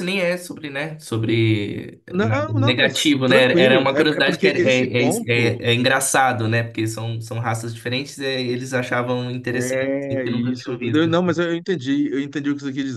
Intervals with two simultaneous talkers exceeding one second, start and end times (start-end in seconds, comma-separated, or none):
2.1-5.6, 9.6-11.1